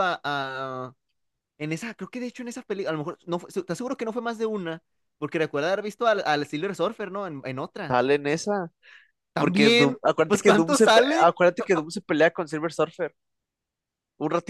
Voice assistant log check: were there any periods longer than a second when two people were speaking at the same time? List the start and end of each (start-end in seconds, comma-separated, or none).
9.4-11.3